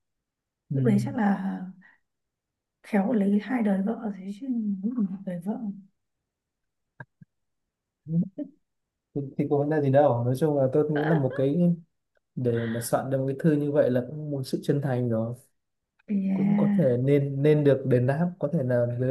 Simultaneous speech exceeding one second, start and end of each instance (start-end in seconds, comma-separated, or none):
none